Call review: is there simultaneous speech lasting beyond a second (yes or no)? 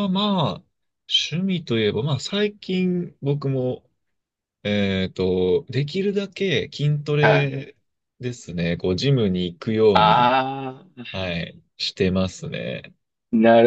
no